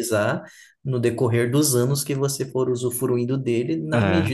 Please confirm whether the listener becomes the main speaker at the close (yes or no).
no